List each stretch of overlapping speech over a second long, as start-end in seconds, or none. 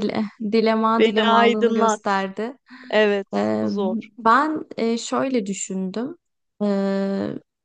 1.0-2.2